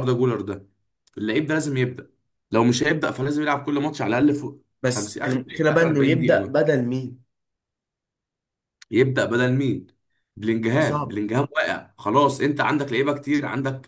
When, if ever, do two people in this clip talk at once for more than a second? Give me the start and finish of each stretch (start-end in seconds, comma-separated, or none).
4.8-6.7